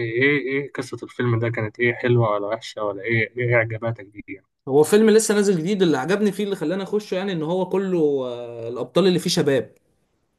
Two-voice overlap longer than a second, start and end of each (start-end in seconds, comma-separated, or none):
none